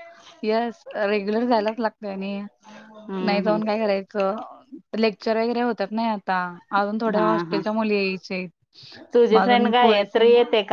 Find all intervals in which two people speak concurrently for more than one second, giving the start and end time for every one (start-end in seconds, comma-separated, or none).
none